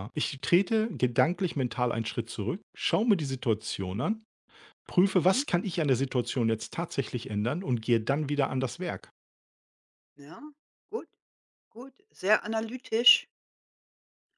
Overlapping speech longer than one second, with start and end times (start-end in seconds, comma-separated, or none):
none